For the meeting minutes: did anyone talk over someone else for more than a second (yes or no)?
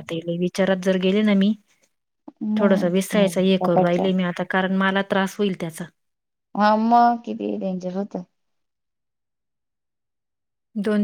yes